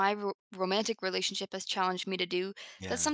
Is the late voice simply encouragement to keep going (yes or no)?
yes